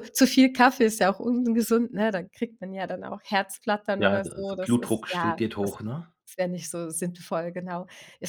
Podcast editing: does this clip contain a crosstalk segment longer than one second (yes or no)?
yes